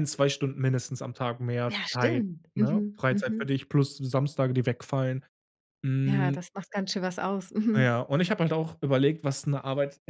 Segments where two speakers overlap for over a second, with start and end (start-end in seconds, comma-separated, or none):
1.7-3.6